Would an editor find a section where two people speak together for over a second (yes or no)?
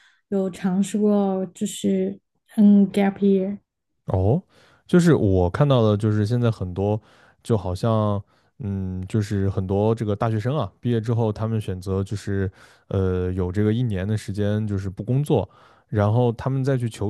no